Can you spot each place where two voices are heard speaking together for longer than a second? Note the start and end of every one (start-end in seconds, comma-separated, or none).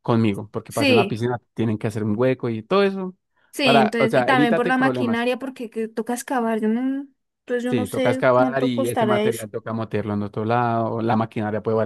3.6-5.3, 7.7-9.5